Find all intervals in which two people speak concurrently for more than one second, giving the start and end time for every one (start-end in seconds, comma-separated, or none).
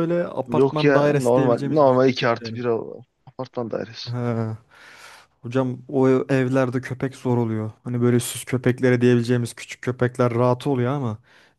0.6-2.6